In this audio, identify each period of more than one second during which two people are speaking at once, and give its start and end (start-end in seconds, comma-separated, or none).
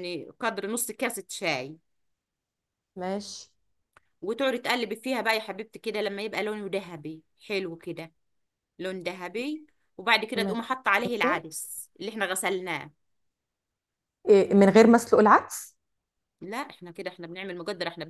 none